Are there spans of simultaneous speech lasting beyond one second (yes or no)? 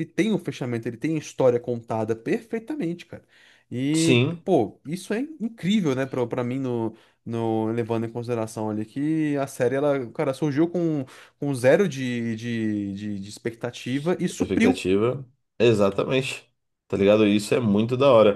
no